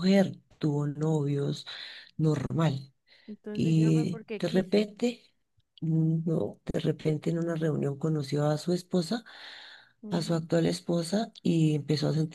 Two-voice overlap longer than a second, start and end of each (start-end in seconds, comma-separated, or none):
3.5-4.9